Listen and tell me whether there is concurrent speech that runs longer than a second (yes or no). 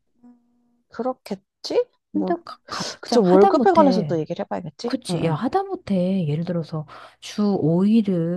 yes